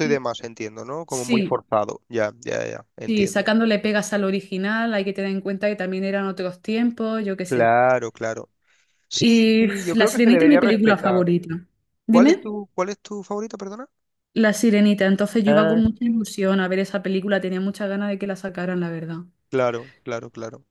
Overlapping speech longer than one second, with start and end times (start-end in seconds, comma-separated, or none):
9.2-11.2